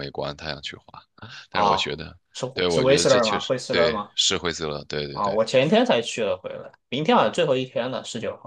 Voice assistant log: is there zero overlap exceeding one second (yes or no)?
no